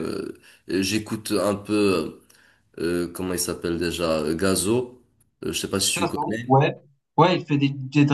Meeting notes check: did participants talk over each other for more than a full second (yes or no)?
no